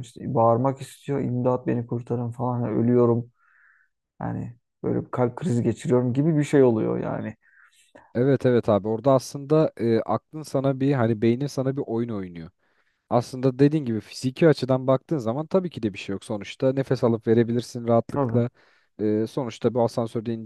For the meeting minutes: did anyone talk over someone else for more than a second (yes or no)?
no